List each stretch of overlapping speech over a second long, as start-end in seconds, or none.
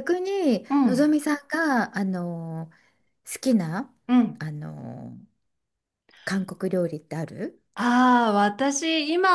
none